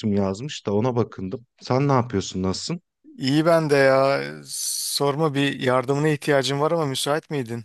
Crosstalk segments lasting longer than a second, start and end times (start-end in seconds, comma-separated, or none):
none